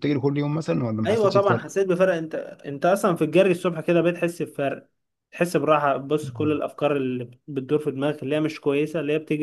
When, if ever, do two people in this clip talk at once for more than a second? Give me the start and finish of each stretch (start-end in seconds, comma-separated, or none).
none